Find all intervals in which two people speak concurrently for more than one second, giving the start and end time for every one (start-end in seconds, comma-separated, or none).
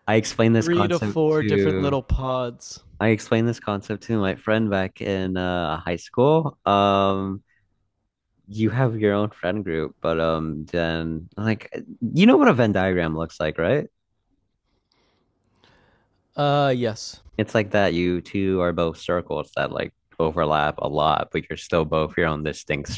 0.6-2.0